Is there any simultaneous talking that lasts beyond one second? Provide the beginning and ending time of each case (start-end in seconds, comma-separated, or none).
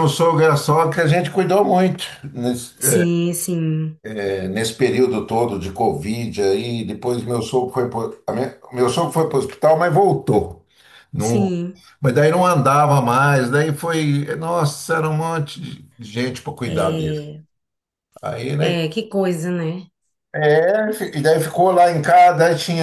none